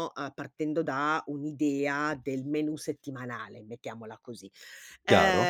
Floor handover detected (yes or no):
no